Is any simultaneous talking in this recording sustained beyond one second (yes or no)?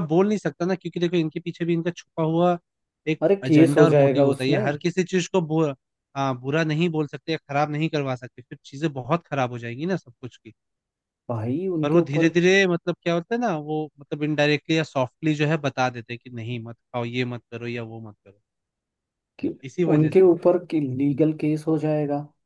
yes